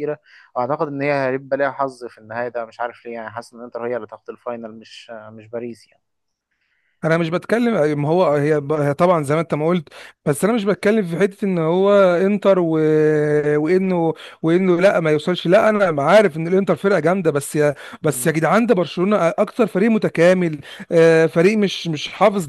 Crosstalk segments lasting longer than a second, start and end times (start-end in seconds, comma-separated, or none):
none